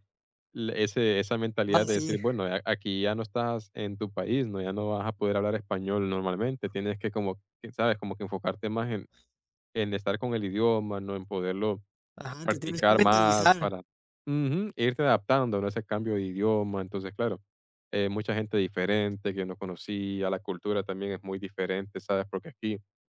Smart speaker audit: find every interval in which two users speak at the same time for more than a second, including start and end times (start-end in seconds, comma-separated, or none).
12.4-13.7